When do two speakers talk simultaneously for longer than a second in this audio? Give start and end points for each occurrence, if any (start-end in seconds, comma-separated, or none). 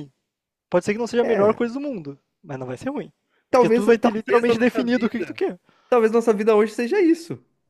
3.5-5.4